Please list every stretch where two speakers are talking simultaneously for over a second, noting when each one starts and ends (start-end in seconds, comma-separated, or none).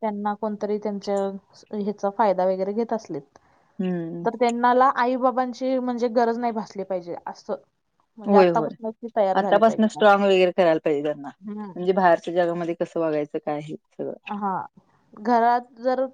none